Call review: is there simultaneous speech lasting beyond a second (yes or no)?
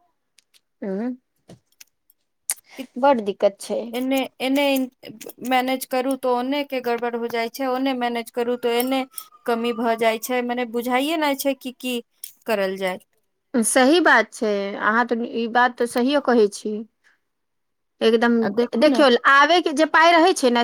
no